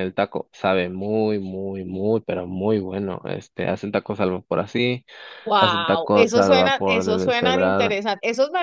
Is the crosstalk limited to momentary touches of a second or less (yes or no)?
no